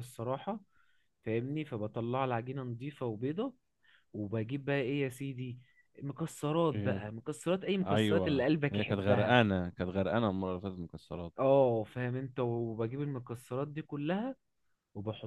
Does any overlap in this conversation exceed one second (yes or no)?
yes